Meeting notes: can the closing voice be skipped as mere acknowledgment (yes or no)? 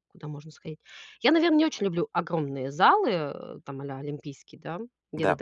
yes